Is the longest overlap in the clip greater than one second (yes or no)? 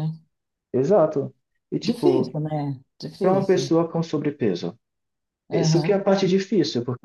no